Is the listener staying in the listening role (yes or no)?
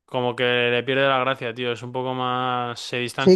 no